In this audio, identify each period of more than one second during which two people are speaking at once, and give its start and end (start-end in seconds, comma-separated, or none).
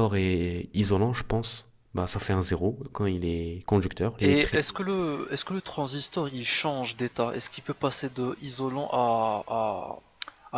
none